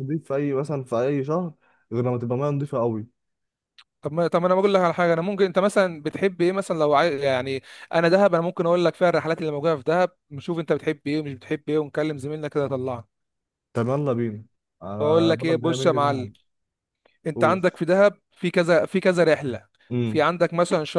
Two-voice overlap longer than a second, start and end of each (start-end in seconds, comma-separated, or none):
15.0-16.3